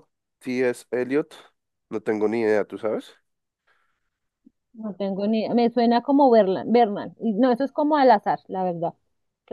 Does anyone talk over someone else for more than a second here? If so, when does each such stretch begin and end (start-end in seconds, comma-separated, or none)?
none